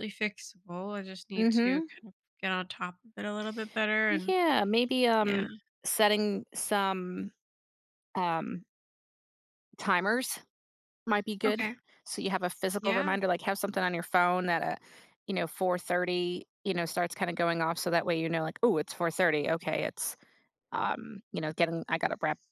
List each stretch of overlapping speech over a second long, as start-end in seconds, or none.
none